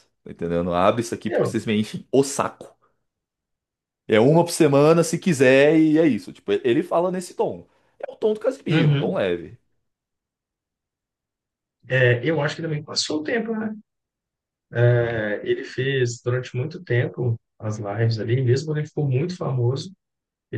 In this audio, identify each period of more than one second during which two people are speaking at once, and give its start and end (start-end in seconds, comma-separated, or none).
none